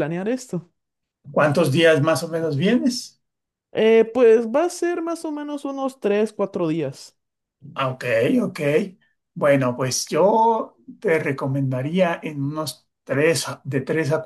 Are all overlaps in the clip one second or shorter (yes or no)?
yes